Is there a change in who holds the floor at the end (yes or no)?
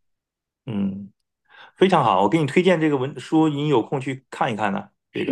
yes